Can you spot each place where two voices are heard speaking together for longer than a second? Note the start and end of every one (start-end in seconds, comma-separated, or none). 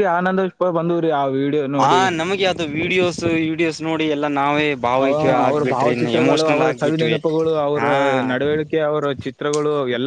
5.0-7.2